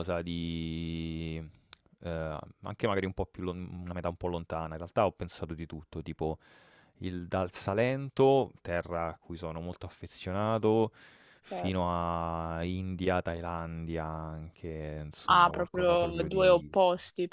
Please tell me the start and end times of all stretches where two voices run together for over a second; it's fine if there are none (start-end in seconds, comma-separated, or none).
15.3-16.8